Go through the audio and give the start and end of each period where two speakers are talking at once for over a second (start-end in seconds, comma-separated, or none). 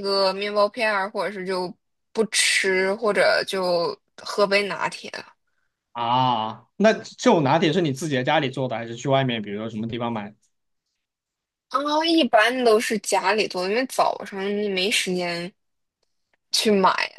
none